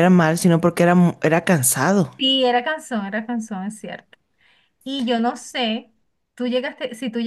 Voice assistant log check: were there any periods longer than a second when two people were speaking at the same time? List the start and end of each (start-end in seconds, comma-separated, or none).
none